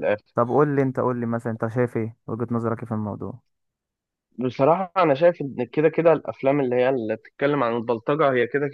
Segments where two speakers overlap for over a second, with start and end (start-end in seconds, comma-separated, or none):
none